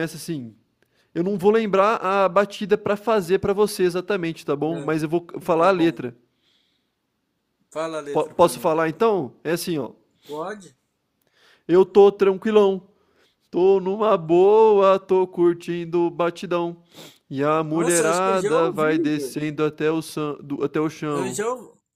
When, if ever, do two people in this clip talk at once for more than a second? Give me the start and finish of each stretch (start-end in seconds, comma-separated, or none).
17.7-19.4